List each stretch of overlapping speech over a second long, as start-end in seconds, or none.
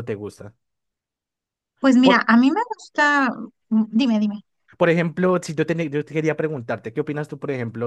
none